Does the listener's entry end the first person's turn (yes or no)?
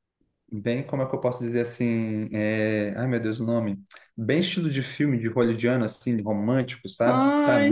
yes